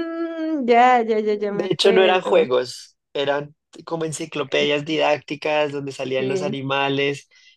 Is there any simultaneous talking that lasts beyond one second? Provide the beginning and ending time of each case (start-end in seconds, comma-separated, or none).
1.3-2.5